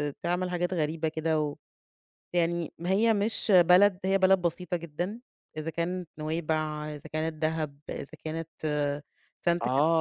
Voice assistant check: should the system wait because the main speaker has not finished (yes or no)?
no